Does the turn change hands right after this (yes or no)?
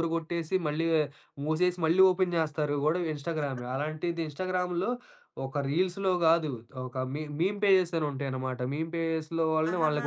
no